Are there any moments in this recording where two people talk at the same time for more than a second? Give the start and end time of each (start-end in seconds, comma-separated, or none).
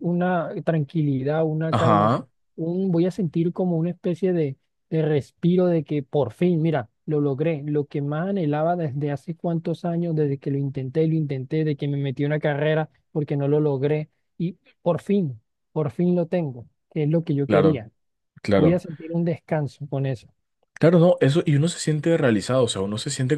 none